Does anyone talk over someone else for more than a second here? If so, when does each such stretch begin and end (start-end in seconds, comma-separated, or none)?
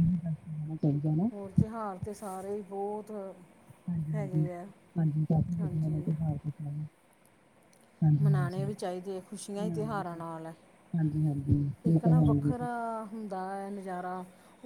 none